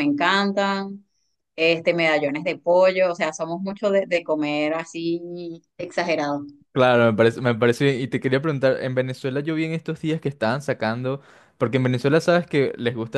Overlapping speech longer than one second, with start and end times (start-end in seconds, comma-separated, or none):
none